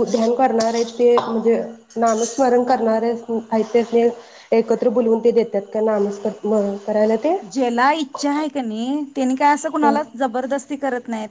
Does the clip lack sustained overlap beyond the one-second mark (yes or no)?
yes